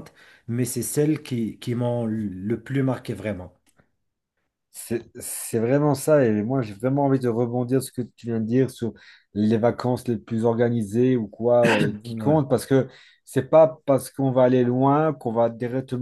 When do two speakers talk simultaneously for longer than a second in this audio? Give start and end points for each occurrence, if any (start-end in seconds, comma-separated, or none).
none